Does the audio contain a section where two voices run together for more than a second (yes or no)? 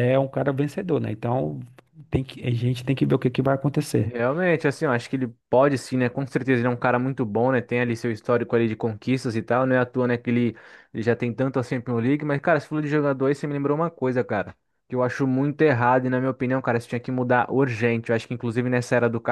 no